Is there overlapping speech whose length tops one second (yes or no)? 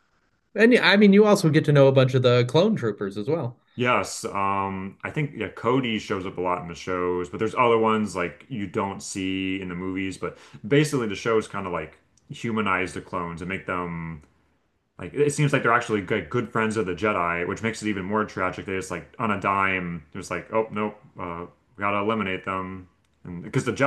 no